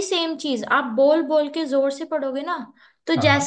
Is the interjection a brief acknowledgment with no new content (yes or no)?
yes